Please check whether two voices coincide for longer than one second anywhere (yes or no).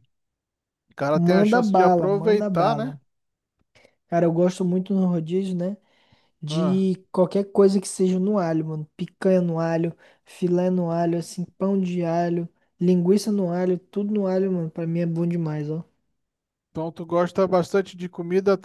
yes